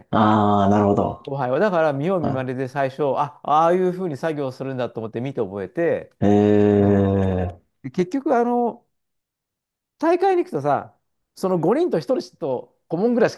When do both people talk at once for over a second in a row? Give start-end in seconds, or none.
none